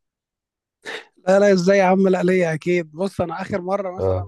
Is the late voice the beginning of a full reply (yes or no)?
no